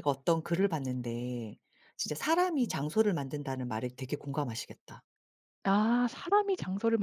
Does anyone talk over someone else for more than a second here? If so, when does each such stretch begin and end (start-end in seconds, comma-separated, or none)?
none